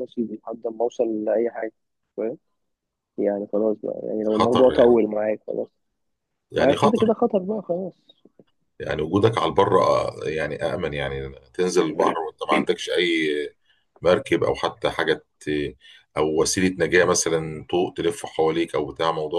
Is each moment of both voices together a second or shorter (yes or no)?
yes